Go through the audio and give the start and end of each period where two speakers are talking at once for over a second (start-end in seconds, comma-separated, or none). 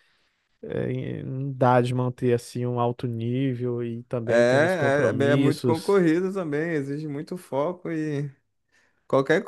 4.2-6.0